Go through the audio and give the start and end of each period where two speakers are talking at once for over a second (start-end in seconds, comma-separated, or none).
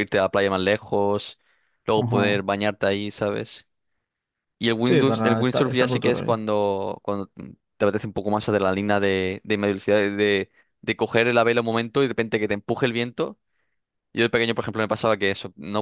4.8-6.4